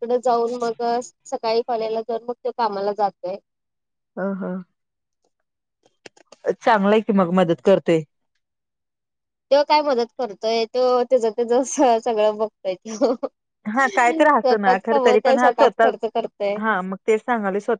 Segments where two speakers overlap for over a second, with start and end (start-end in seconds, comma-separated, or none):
14.2-15.9